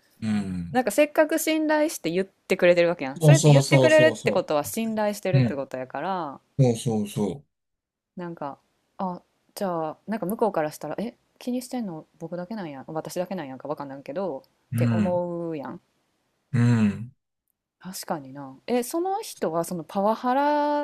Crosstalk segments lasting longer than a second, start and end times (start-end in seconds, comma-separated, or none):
3.2-4.4